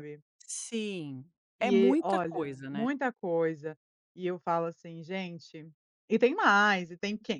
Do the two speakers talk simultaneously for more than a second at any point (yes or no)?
yes